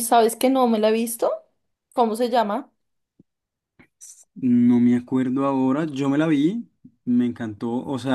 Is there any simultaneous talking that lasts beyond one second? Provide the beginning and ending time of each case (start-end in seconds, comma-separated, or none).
none